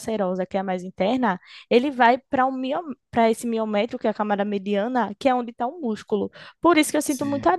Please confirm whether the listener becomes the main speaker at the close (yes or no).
no